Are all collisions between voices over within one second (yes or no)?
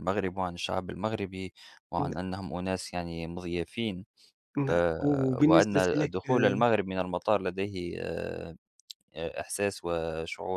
no